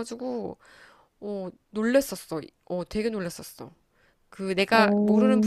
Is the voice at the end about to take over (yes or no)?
no